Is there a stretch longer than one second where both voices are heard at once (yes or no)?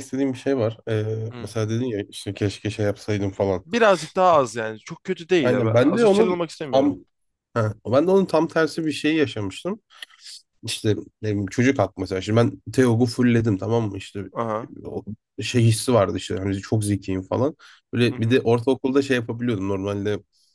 yes